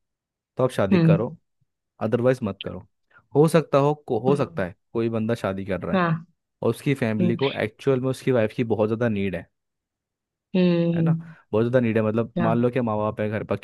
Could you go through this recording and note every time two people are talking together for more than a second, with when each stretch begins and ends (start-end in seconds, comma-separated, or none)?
none